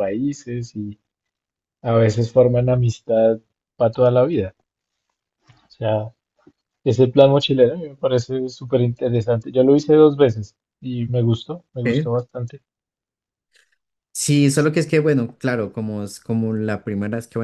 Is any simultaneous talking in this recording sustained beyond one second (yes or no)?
no